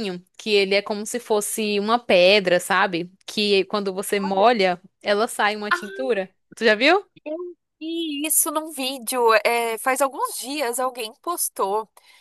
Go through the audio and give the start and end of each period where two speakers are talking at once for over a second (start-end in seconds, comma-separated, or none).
none